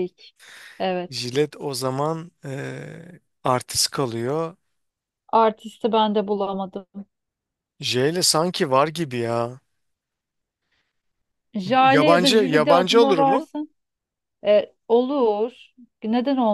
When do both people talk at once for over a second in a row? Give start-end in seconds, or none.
11.8-13.5